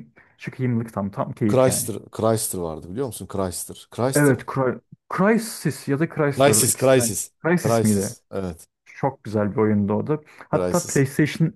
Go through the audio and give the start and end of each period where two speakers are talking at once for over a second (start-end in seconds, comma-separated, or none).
6.3-8.2